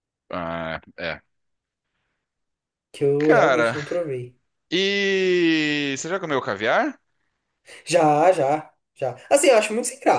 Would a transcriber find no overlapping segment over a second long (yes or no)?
yes